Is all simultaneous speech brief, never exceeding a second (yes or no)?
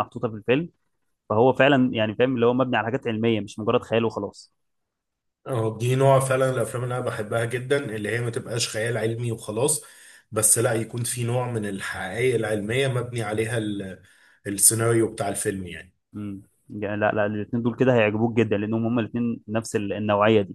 yes